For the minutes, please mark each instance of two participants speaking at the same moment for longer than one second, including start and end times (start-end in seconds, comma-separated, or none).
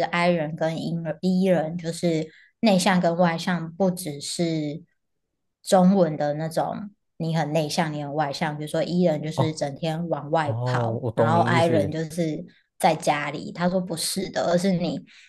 10.4-11.9